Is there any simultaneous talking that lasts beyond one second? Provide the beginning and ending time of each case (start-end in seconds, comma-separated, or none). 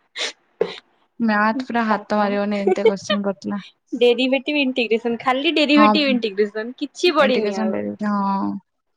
none